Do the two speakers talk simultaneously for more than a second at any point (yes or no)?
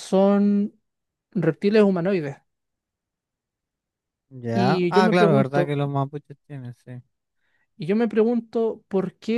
yes